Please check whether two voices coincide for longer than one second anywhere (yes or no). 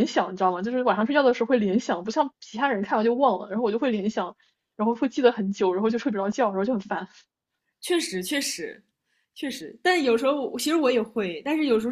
no